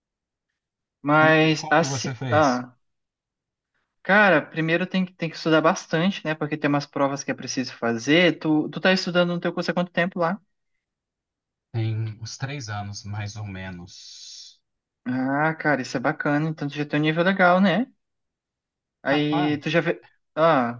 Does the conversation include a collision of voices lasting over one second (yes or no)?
yes